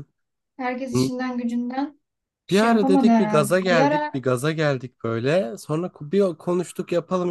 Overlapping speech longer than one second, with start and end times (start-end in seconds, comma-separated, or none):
2.5-4.2